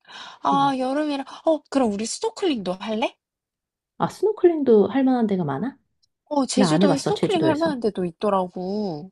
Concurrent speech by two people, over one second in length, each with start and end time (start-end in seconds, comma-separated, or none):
6.5-7.8